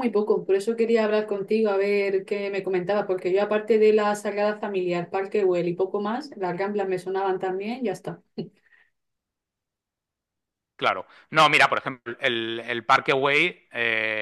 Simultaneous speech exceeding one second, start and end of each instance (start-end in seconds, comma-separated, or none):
none